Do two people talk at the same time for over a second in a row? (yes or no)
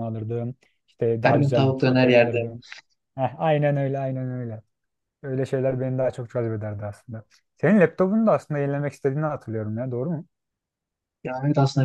yes